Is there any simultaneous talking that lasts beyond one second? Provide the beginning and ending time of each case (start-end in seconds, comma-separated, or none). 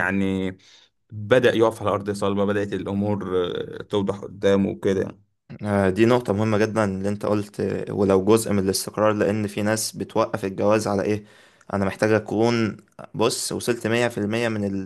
none